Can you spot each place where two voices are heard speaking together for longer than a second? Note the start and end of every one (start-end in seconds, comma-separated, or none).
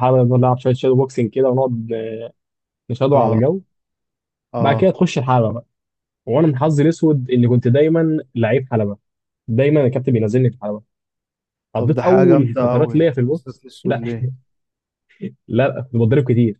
11.8-14.0